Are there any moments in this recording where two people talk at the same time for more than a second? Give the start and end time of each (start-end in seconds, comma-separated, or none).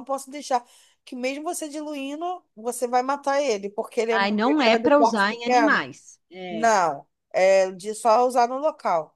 4.1-5.9